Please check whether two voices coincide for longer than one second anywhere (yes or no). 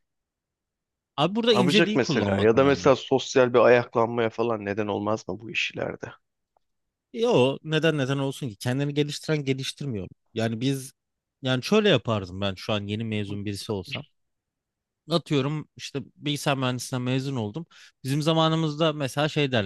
yes